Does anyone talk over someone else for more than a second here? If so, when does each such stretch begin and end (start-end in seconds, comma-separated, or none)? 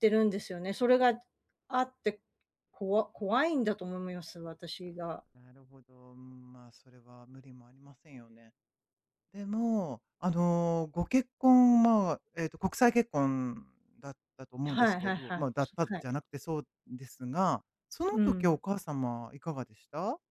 14.6-16.1